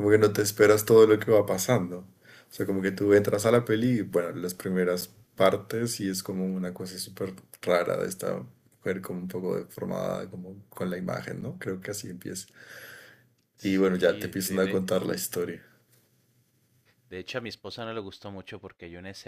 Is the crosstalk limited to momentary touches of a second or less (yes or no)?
no